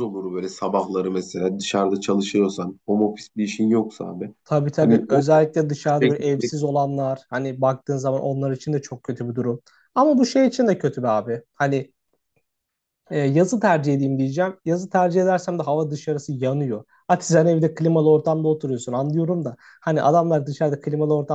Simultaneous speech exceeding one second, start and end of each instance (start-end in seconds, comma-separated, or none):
none